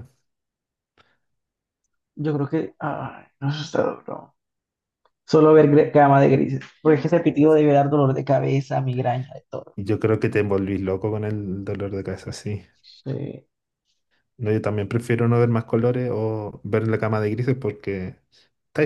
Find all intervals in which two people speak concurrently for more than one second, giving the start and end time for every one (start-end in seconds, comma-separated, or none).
none